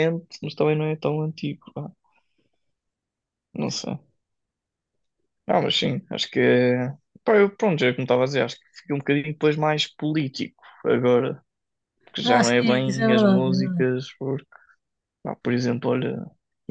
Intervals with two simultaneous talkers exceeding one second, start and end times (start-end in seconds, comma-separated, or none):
12.2-13.9